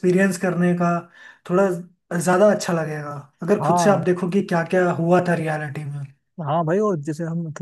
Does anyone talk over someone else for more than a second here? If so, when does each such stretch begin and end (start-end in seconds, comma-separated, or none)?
none